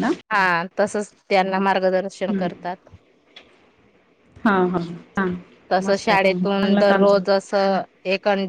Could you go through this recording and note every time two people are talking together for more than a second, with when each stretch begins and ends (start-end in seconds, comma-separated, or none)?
5.8-7.2